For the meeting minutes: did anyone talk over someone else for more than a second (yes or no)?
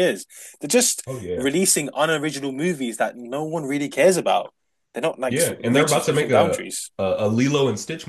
yes